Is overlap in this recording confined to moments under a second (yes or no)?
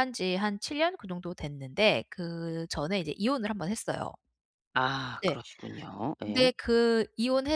yes